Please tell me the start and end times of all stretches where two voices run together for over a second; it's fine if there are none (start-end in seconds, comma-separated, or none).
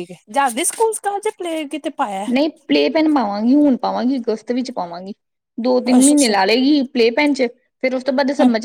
none